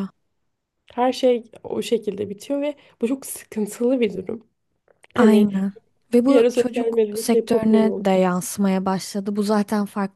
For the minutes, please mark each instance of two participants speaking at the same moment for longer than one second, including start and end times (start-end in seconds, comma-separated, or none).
6.3-8.0